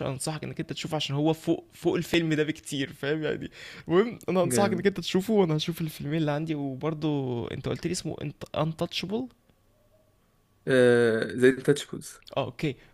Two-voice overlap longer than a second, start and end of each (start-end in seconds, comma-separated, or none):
none